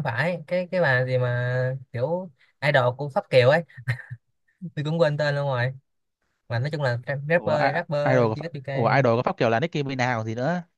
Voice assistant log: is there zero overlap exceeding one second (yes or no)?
no